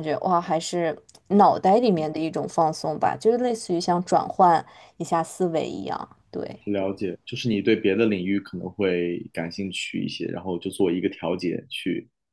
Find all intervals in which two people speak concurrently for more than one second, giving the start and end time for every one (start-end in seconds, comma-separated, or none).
none